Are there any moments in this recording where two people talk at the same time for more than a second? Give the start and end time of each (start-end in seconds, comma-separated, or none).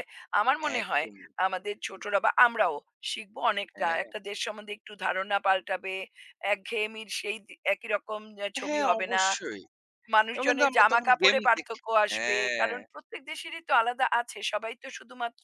10.3-12.7